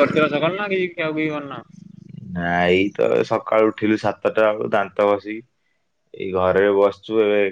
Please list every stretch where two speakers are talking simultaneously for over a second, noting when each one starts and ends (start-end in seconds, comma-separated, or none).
none